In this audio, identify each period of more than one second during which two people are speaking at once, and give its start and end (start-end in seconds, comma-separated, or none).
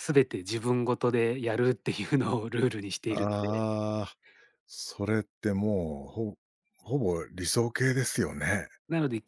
none